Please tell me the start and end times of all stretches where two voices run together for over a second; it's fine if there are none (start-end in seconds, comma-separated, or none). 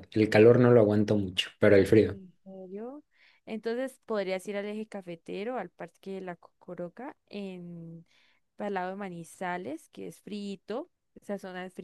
none